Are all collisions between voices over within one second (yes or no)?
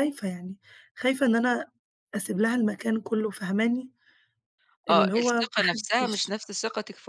no